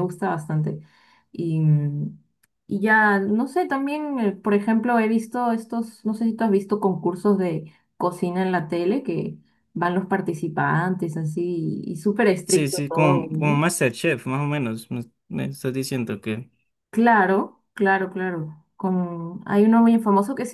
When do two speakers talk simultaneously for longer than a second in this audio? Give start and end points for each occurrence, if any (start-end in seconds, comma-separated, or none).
12.4-13.7